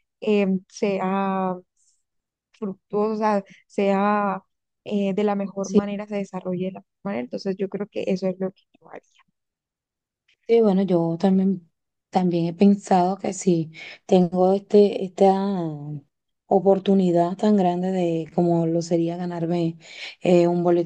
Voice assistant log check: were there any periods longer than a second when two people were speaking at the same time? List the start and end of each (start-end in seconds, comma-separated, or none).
none